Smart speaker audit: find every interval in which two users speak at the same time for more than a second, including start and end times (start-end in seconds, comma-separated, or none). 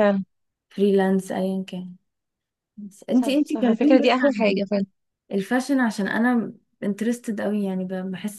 3.1-4.6